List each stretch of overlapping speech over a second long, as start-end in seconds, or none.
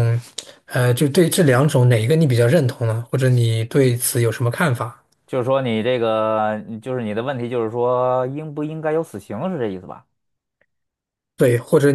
none